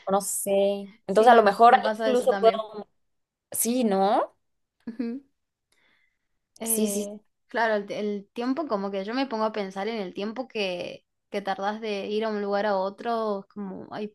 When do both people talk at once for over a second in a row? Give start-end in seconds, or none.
1.1-2.7